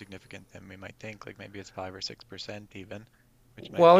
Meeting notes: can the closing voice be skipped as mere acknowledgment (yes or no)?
no